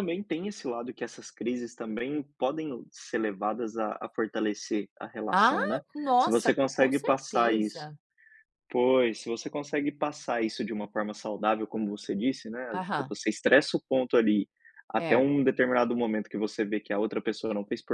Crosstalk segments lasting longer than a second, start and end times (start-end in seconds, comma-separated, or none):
6.2-7.9